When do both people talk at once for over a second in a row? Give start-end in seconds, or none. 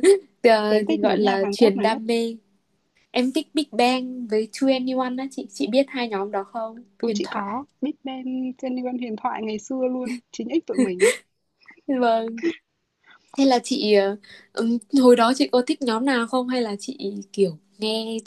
0.7-2.0